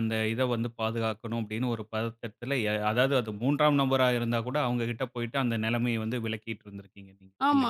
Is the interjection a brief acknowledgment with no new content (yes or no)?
no